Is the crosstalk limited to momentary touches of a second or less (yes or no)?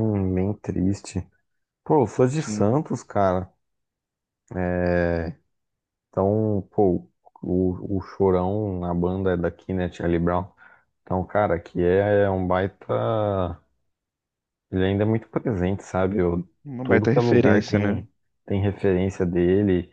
no